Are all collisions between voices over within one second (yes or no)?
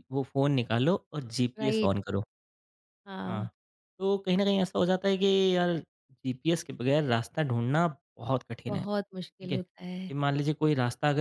no